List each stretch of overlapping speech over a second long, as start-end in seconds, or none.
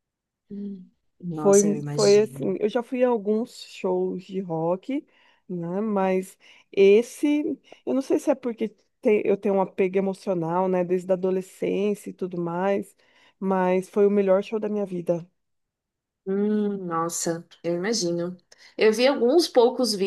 1.3-2.6